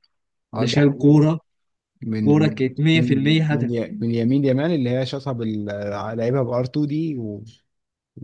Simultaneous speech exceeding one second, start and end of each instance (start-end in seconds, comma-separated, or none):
2.2-3.9